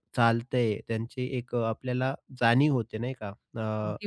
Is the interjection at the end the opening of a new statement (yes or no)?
no